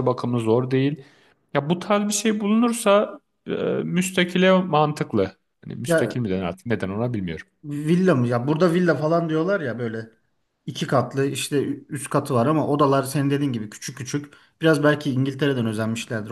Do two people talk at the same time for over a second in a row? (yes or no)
no